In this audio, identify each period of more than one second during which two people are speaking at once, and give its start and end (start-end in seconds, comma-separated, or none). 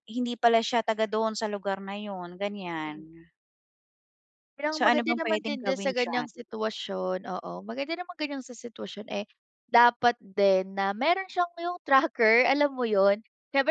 4.7-6.3